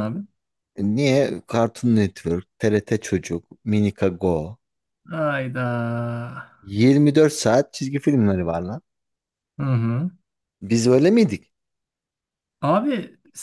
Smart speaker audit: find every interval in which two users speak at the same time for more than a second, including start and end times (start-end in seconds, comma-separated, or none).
none